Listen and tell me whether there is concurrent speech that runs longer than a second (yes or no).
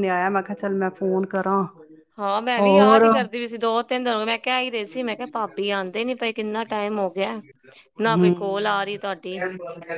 no